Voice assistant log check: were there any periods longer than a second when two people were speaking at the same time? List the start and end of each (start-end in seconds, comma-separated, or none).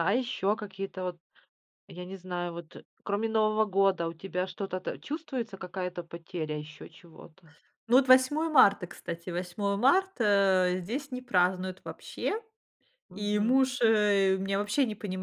none